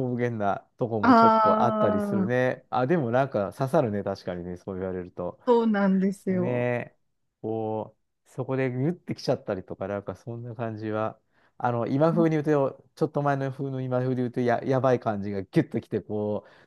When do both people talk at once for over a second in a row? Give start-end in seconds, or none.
1.0-2.5